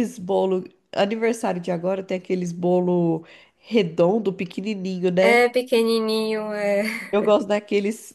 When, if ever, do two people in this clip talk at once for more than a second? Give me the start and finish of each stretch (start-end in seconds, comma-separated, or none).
none